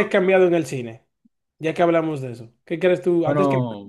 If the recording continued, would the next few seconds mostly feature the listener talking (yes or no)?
no